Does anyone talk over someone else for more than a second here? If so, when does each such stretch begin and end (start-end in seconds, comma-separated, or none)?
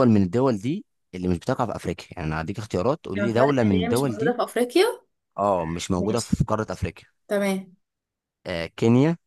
3.1-4.4